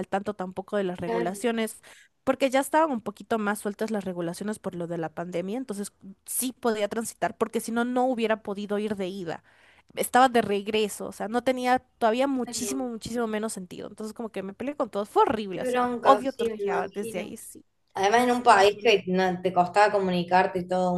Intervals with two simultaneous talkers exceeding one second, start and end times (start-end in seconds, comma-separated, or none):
15.5-17.4